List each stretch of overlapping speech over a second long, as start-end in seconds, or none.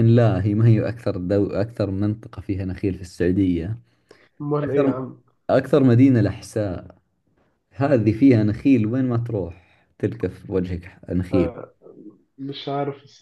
none